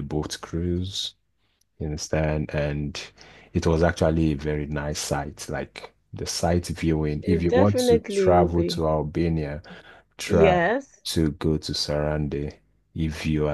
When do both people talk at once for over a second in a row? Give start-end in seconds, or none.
7.2-8.9